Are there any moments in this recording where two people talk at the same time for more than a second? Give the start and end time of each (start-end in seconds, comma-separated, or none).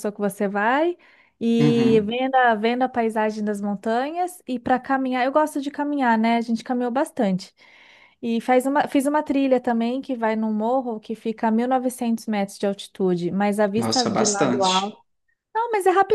13.7-15.0